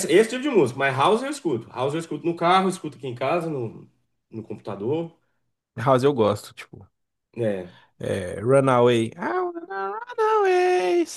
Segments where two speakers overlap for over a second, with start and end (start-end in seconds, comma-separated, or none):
none